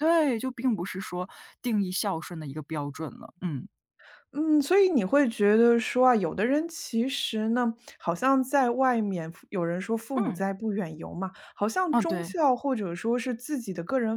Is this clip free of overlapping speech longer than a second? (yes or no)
yes